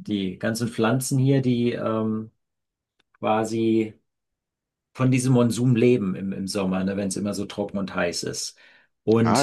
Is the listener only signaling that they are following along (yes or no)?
yes